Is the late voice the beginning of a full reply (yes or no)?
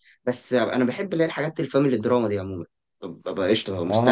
yes